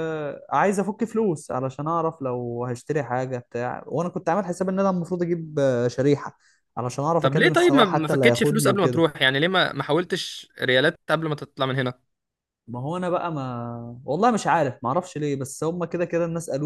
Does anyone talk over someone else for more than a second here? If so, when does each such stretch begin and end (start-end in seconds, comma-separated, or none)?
7.2-9.1